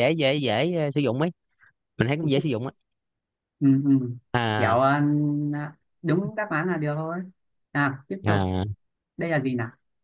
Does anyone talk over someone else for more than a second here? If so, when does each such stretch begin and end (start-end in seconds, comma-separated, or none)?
none